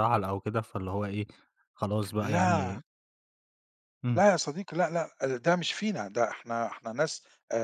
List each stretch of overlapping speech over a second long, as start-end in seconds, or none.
none